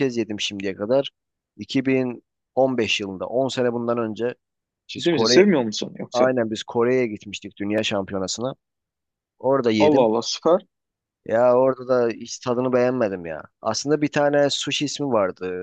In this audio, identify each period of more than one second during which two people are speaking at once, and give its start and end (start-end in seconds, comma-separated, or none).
none